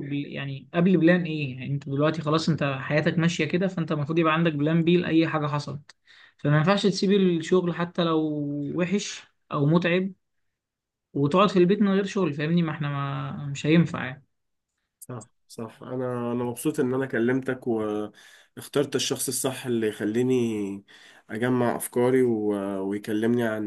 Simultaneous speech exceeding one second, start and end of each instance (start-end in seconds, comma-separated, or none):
none